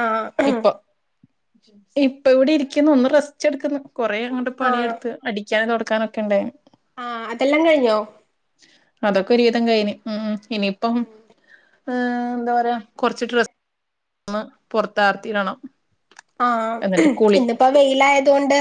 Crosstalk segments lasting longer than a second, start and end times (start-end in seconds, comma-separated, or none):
none